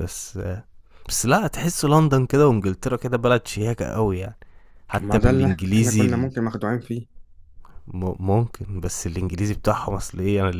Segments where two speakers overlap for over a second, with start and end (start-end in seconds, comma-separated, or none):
5.0-6.3